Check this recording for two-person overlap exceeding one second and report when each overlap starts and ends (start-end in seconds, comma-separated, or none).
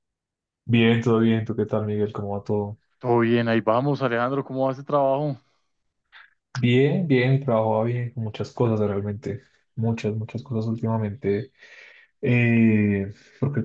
none